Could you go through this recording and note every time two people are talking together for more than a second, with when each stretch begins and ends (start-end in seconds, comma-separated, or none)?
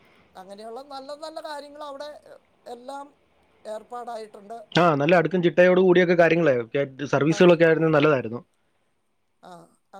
none